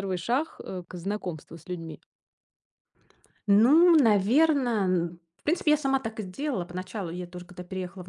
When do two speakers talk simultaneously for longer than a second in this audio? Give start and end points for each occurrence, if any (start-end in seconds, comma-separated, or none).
none